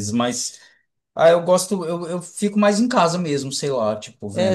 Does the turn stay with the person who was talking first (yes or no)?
no